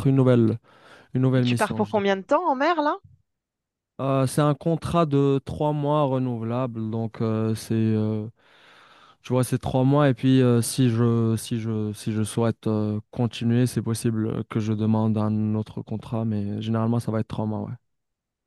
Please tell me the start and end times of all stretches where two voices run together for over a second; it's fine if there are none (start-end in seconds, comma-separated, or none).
none